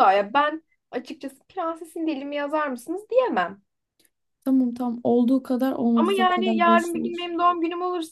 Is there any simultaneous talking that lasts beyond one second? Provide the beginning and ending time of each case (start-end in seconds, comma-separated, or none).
5.9-7.2